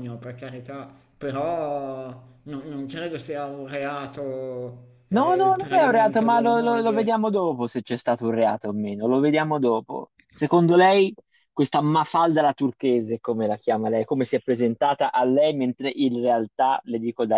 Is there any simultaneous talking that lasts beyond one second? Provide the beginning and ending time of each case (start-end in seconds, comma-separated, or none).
5.1-7.1